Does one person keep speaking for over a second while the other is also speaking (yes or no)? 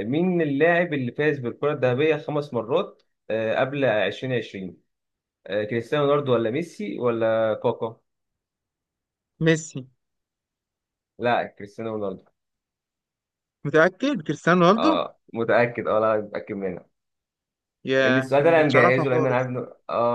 yes